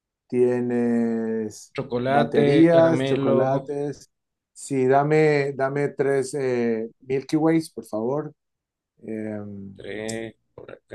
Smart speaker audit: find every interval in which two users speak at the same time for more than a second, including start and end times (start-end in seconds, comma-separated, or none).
1.7-3.7